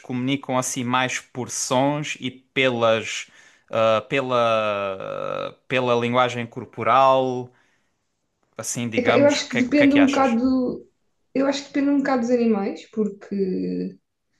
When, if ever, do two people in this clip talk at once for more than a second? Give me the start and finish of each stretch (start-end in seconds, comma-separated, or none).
8.9-10.4